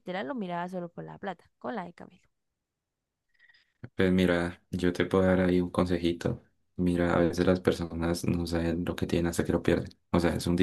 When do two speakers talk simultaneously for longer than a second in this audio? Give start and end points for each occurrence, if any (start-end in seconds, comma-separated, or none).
none